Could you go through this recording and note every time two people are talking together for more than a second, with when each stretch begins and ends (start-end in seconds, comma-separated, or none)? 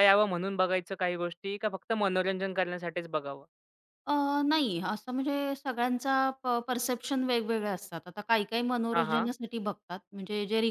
none